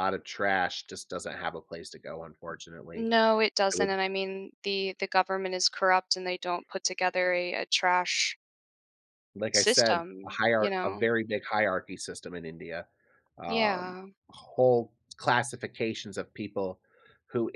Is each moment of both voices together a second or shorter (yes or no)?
no